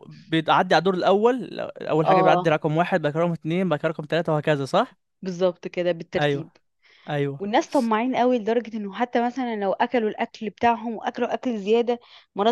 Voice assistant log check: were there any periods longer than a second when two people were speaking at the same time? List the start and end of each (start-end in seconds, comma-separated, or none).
none